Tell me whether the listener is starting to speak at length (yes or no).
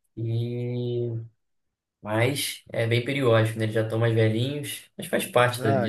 yes